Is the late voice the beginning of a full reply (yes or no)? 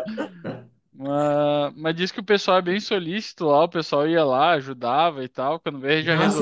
yes